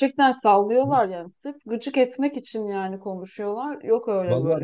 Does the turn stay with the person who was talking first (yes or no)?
no